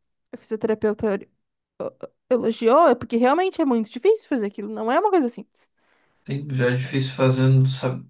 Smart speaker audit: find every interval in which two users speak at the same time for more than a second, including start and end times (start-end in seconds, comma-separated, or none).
none